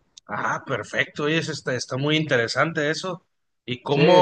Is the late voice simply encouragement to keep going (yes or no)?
yes